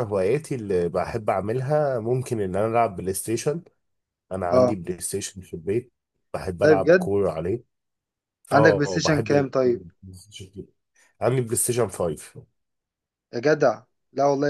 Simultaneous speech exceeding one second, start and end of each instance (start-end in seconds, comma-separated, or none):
8.5-9.8